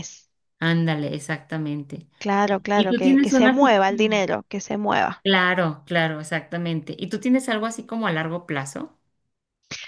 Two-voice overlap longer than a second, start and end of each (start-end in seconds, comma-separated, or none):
2.4-4.2